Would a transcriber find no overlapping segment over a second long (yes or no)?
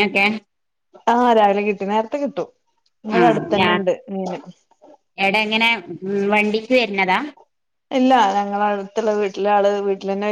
yes